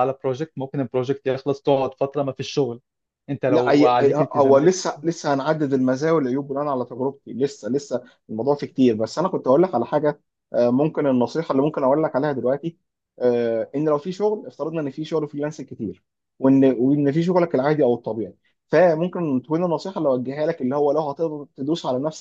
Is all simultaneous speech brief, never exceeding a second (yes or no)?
no